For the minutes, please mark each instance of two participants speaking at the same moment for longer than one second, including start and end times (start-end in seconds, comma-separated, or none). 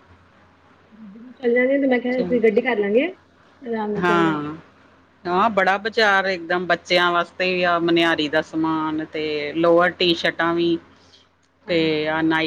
none